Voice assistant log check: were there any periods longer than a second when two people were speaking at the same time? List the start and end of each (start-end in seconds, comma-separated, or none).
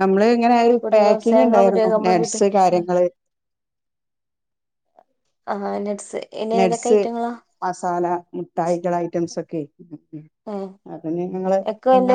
0.8-2.4